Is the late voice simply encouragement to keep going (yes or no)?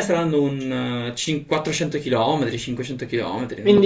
no